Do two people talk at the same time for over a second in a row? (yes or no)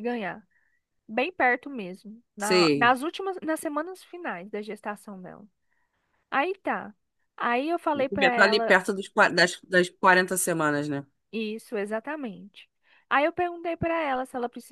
no